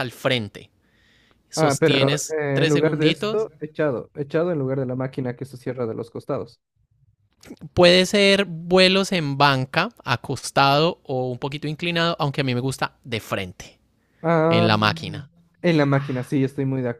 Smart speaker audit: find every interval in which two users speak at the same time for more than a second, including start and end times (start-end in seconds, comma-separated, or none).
1.6-3.5